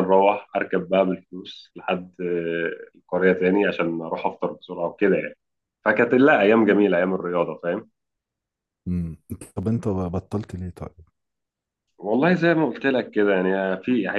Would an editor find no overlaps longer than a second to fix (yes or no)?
yes